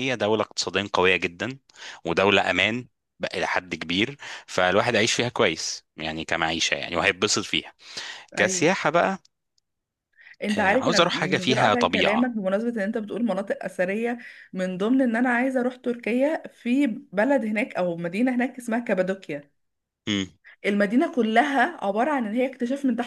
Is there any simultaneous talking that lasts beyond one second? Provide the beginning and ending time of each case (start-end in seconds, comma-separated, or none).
10.6-12.3